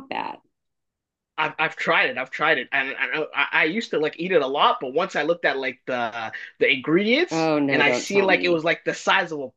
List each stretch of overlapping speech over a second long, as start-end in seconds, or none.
7.3-8.6